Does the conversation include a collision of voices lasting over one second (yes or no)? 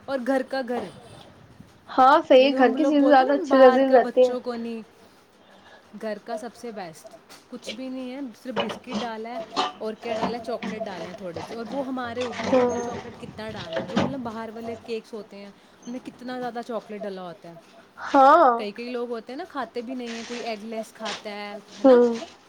yes